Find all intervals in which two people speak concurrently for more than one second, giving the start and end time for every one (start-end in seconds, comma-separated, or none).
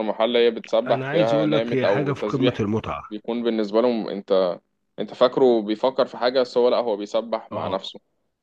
0.9-2.6